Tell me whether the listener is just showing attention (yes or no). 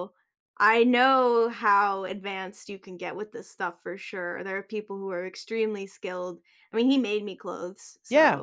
no